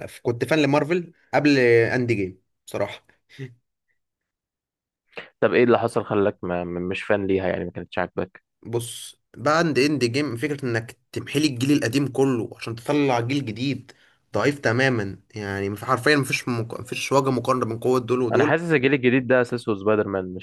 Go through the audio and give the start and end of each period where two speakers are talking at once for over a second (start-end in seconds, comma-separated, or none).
none